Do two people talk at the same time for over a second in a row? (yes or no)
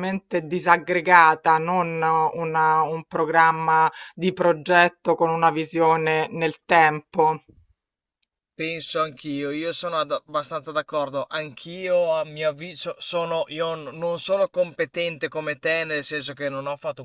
no